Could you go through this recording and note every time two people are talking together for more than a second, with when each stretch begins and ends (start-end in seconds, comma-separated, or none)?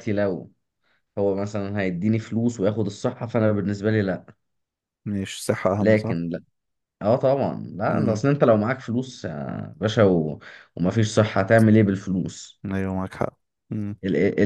none